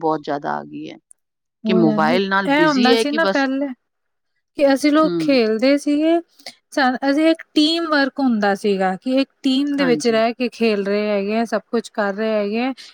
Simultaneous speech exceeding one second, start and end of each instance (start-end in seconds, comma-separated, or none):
1.7-3.4